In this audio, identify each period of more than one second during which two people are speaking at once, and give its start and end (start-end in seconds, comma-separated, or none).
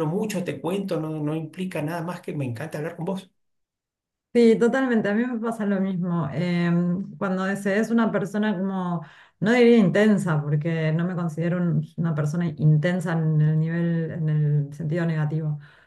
none